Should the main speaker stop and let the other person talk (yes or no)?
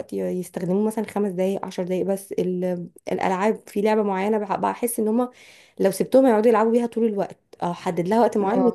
no